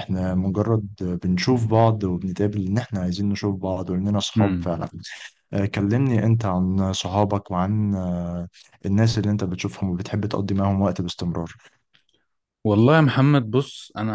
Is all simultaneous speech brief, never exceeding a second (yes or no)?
yes